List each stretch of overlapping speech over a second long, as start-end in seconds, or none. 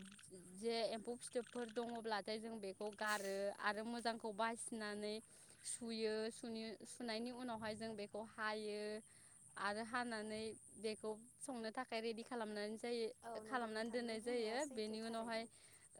13.5-15.4